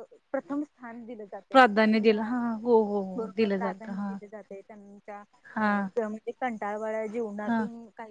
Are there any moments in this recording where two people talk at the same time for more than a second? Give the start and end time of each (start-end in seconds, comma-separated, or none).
none